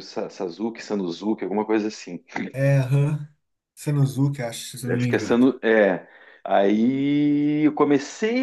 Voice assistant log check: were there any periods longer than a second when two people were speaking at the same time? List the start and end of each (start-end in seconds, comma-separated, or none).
none